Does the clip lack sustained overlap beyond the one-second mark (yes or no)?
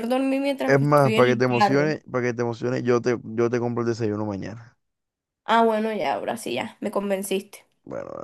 no